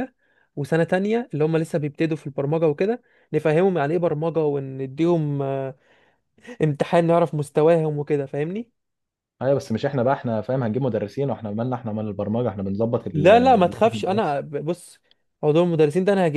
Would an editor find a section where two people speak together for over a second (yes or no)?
yes